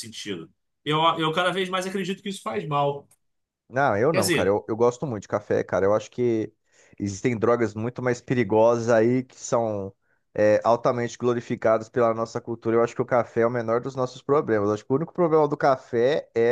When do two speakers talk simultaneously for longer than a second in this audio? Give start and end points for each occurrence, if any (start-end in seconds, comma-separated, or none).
none